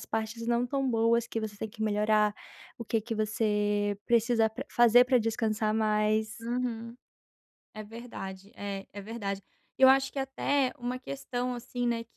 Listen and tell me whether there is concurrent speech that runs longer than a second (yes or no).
no